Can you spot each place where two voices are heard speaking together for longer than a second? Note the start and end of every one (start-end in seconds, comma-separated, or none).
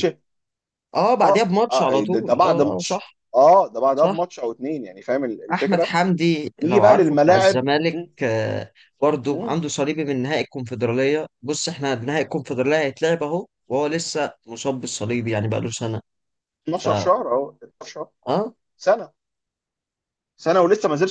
1.2-3.2, 6.6-8.1